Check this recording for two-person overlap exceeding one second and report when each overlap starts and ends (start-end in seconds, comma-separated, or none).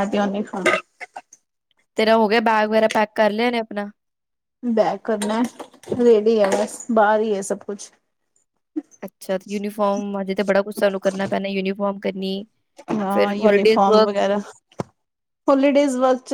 none